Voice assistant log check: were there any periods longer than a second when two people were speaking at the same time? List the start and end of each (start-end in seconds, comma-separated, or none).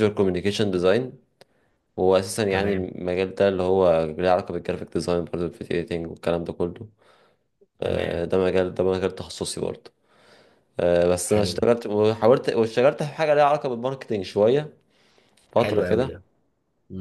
none